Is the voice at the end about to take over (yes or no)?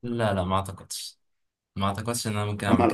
yes